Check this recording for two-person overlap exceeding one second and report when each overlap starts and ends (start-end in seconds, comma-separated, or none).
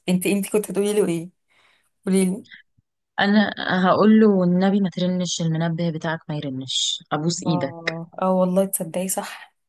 none